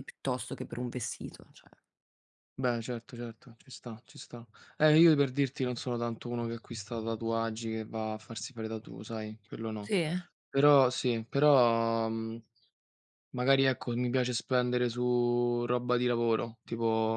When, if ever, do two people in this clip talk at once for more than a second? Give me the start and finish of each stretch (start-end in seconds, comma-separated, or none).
none